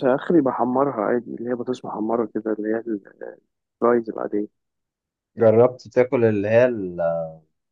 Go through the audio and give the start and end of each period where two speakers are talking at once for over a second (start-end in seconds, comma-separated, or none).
none